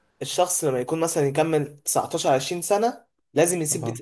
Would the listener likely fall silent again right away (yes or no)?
yes